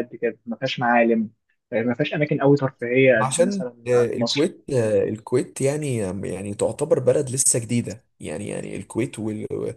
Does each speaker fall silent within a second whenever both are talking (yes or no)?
no